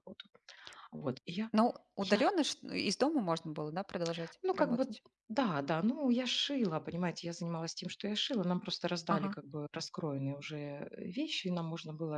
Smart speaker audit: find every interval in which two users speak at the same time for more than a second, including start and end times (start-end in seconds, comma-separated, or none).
none